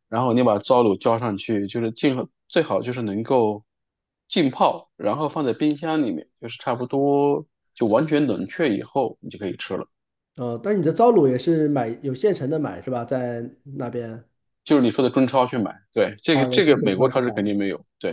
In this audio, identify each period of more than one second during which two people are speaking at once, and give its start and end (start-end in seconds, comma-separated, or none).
16.3-17.6